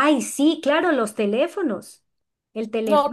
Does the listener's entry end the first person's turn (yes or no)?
no